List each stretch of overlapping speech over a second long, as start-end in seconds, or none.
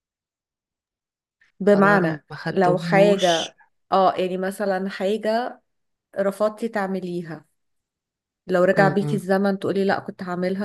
1.7-3.5